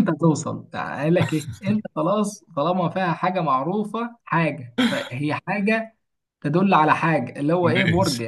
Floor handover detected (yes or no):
yes